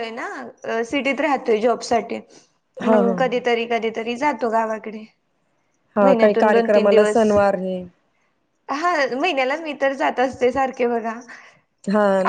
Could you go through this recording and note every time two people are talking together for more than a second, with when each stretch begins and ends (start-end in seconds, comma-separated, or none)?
6.0-7.3